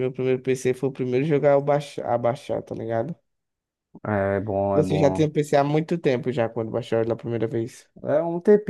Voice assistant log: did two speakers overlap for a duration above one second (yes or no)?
no